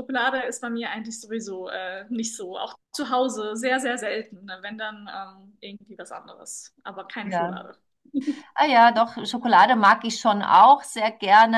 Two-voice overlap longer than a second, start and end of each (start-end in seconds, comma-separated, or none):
none